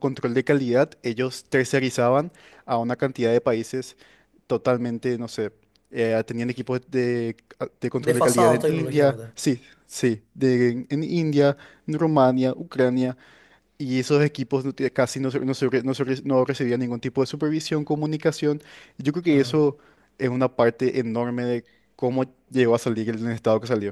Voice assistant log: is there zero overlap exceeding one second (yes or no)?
no